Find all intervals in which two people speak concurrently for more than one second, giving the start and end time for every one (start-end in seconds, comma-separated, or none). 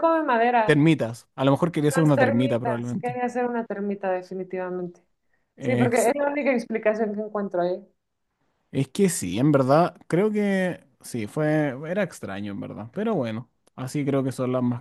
1.9-3.2